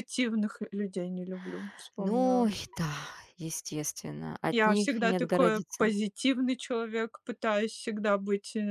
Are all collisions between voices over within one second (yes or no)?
no